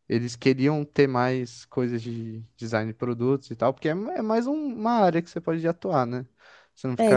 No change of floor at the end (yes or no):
no